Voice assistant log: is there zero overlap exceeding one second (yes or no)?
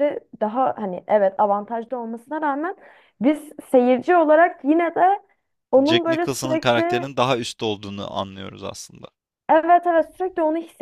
no